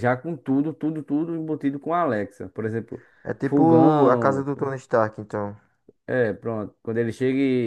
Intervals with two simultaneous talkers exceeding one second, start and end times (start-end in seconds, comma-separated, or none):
3.4-4.7